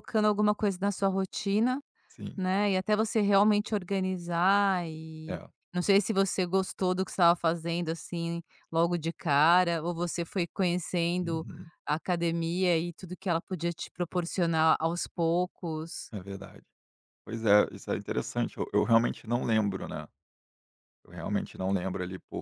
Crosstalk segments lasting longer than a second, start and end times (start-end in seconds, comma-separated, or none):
none